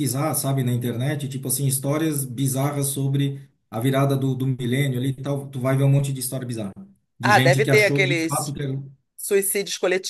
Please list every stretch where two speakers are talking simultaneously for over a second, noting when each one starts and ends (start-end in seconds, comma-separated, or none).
7.2-8.6